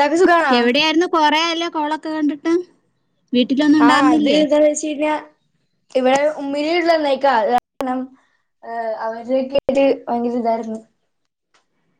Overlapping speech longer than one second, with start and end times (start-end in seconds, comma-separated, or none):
none